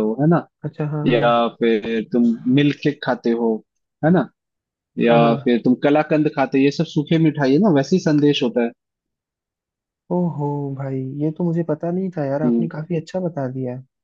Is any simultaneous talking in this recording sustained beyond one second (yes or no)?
no